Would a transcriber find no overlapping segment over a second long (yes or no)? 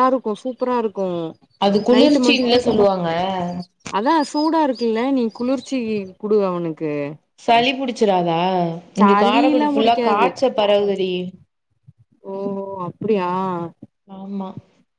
no